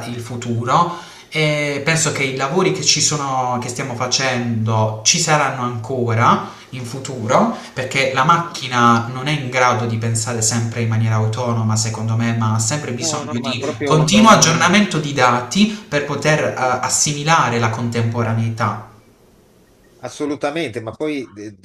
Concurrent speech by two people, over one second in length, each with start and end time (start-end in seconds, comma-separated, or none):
13.0-14.5